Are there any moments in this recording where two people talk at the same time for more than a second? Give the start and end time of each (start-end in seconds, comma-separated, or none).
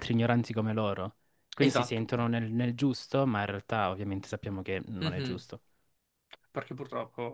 none